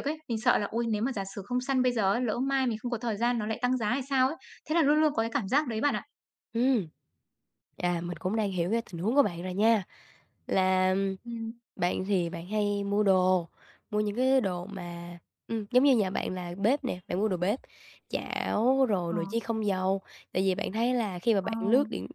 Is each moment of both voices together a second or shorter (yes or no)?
yes